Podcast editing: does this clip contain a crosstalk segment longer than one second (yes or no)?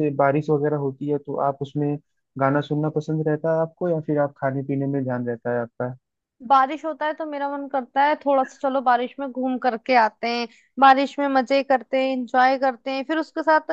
no